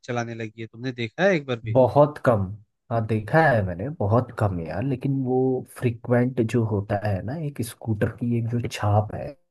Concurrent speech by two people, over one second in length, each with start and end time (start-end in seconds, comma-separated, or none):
none